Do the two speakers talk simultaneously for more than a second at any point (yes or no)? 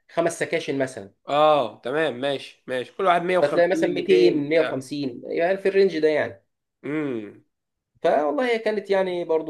yes